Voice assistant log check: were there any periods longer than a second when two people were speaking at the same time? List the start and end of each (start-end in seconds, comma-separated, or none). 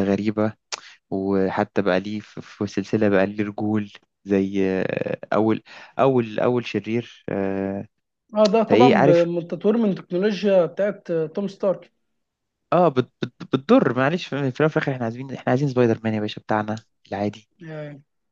none